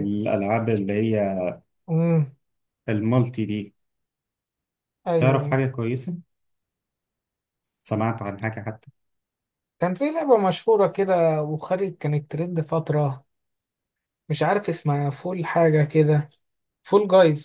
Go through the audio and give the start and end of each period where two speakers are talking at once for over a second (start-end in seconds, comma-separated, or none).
none